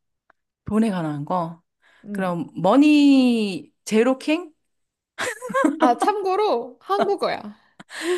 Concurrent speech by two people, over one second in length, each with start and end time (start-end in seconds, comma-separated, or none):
none